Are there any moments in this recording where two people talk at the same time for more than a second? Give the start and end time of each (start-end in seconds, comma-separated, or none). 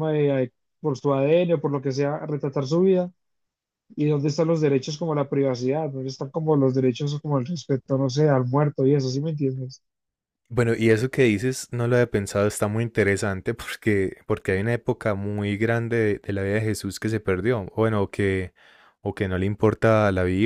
none